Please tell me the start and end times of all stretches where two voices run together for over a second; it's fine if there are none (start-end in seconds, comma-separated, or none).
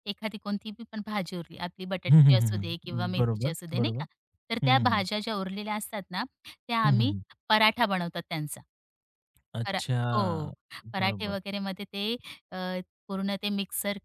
2.1-4.0